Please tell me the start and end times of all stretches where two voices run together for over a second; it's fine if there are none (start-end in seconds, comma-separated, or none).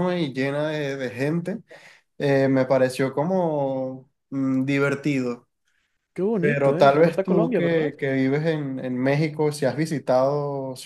6.4-7.9